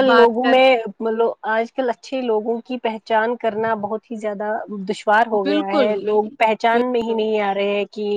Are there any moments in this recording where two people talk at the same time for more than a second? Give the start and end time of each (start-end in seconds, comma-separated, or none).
5.4-7.2